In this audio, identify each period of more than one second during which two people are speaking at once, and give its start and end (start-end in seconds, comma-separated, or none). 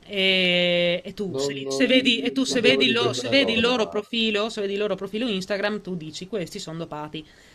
1.3-4.0